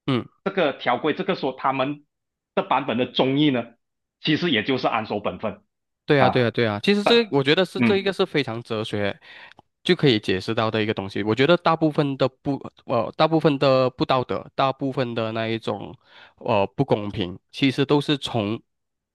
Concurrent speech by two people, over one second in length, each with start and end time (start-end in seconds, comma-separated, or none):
none